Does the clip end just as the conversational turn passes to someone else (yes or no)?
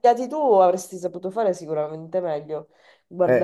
yes